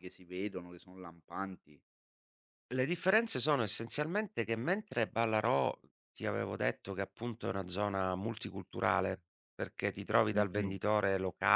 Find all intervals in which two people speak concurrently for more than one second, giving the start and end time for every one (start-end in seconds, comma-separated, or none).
none